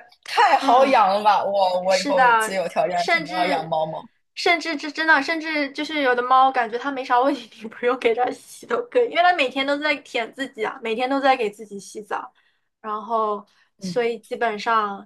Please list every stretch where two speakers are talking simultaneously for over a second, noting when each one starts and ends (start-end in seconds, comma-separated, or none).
1.9-3.8